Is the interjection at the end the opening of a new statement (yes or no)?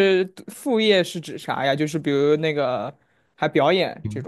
yes